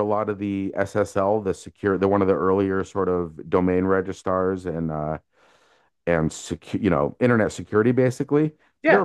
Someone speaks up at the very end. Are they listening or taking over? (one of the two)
listening